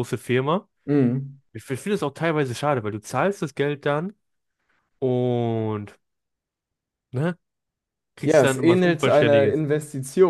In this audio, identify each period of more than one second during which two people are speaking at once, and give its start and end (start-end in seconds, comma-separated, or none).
8.2-9.6